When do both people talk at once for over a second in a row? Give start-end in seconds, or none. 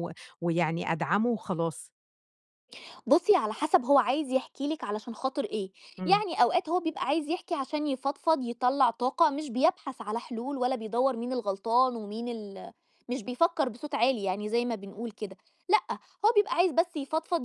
none